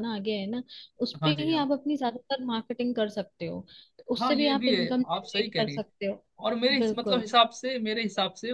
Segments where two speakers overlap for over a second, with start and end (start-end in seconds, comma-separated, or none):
4.2-5.8